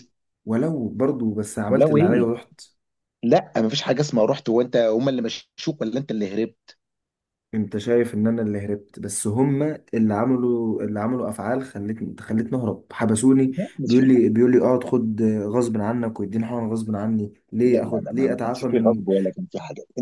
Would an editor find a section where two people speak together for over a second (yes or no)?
yes